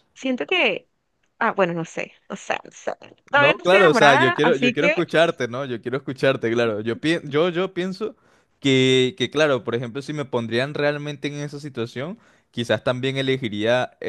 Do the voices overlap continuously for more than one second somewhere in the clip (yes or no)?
yes